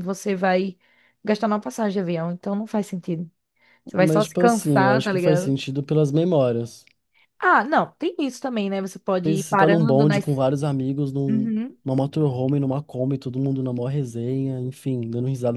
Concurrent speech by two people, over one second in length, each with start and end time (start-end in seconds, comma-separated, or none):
4.0-5.6, 9.2-10.4